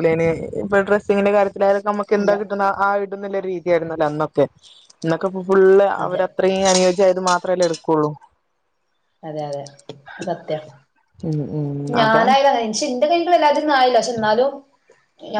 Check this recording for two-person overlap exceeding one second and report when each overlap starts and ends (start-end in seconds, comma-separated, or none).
none